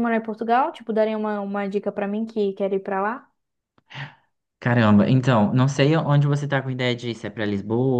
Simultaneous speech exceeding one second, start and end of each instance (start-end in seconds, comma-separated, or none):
none